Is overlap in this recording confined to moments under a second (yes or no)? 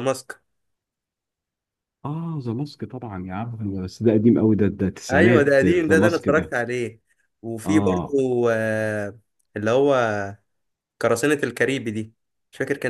no